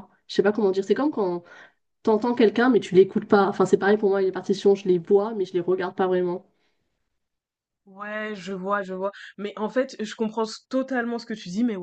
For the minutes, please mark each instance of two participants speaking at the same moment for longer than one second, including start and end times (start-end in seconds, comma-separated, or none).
none